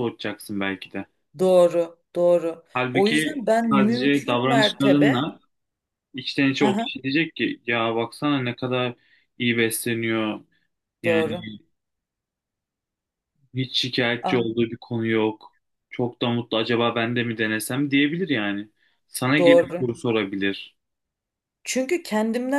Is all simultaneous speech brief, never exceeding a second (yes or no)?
no